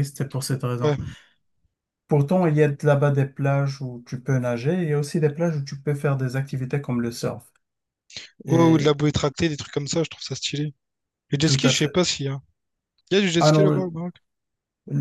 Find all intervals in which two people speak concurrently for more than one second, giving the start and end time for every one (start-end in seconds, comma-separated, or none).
none